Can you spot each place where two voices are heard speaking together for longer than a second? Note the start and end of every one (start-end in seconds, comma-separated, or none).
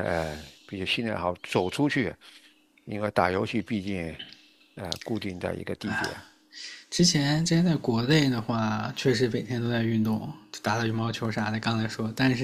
none